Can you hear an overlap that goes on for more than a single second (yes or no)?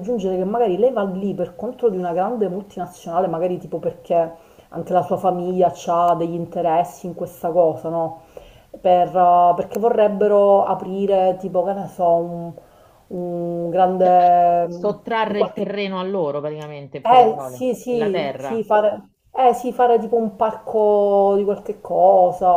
yes